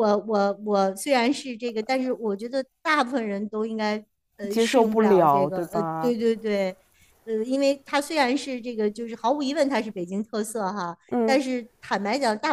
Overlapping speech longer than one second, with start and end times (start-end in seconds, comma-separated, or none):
4.5-6.1